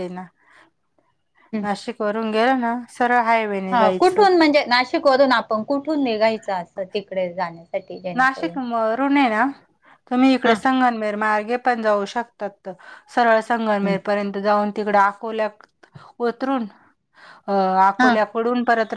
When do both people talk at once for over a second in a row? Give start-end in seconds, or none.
none